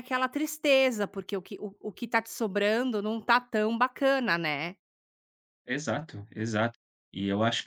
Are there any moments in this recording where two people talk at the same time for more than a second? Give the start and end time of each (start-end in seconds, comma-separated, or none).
none